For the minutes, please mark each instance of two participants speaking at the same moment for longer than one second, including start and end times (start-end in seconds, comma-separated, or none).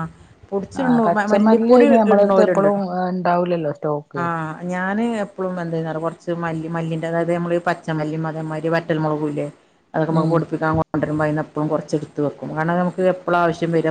0.8-2.7